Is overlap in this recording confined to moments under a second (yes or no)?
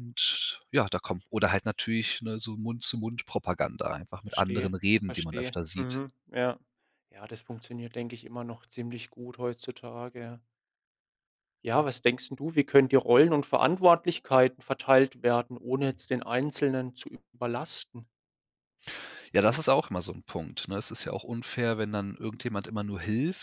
no